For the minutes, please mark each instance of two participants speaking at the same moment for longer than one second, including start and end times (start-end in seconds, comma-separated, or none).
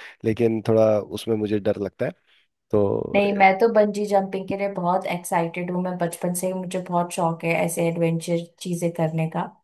none